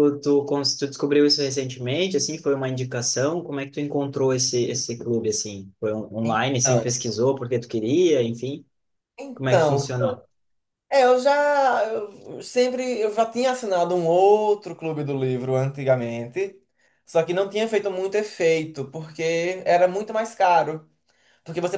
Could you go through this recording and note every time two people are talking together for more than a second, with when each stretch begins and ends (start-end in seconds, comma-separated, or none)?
none